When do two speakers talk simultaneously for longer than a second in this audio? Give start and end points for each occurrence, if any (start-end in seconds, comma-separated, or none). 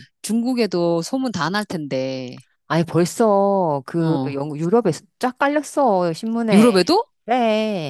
none